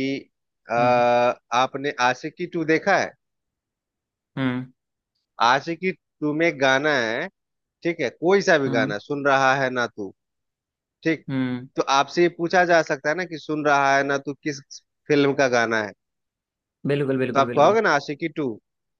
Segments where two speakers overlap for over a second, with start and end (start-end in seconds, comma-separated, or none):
none